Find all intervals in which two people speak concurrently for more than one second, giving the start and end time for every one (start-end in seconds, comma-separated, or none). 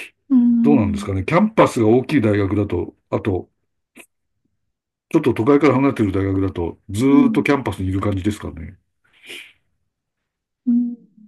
none